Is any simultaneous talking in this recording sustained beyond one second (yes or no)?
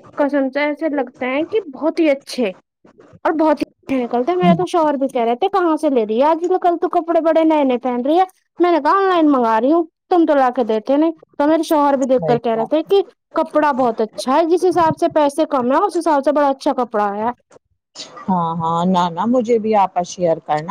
no